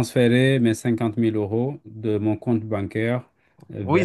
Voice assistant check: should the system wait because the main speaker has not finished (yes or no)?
no